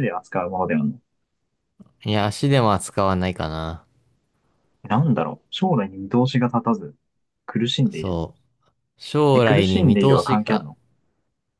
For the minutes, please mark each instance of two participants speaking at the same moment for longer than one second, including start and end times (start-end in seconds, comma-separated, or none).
9.3-10.7